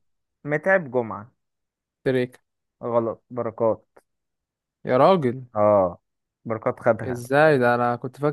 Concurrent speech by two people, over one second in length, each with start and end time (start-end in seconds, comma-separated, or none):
none